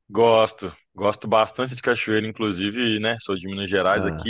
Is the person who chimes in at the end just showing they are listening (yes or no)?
yes